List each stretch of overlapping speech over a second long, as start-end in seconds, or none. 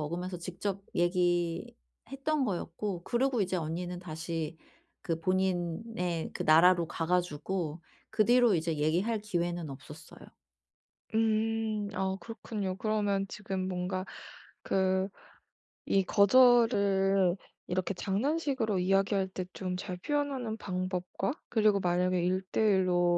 none